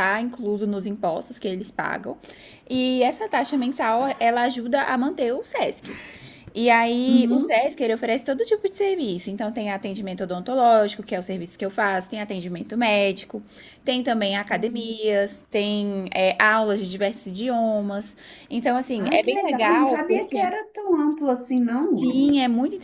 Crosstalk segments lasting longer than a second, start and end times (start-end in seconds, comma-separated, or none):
19.1-20.5